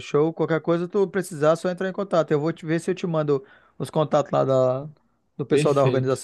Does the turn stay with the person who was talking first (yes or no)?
no